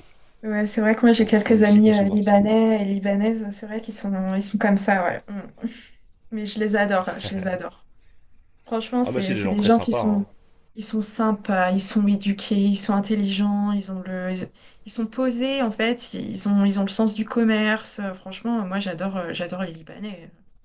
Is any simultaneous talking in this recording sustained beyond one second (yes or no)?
yes